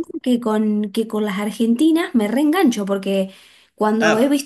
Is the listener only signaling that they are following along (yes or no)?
yes